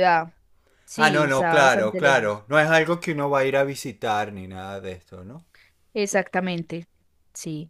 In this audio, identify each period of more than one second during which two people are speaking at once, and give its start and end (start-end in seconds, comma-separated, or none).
0.9-2.4